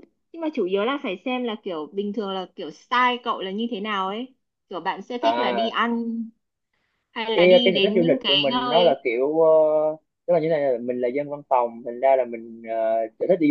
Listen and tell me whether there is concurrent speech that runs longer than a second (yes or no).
yes